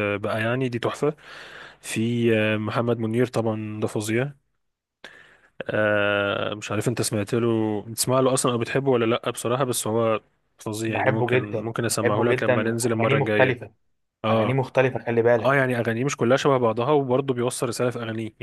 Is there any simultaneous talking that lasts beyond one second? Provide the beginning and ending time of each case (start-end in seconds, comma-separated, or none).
10.9-13.6